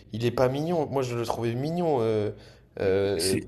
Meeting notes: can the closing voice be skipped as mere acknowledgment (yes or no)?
no